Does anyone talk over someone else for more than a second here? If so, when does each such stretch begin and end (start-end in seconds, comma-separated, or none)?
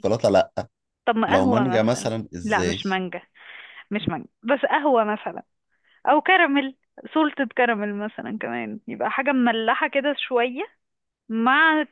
1.3-2.8